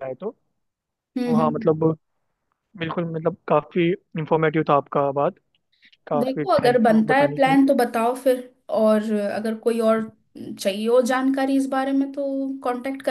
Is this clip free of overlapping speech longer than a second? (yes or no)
no